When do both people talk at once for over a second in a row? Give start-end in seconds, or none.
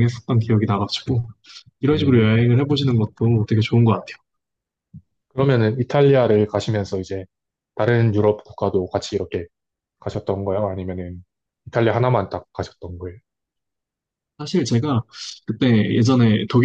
none